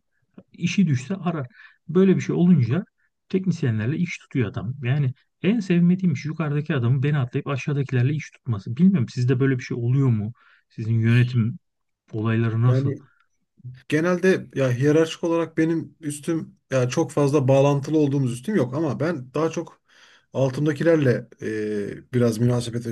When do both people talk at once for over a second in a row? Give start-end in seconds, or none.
none